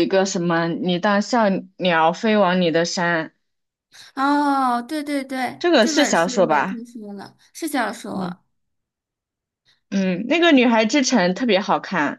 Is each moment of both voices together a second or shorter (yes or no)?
no